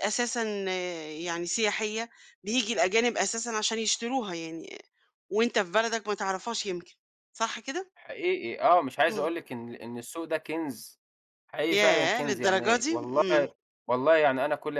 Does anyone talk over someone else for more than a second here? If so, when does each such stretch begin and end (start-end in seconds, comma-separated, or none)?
11.7-13.5